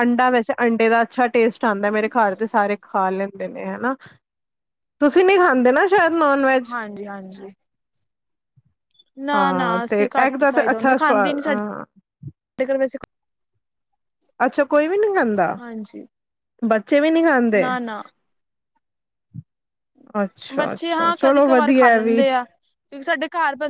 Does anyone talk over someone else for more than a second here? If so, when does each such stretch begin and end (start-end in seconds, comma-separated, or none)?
9.3-11.6, 20.6-22.2